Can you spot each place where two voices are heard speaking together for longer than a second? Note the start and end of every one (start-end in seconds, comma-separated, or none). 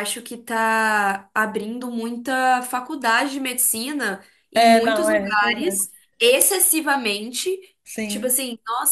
4.5-5.8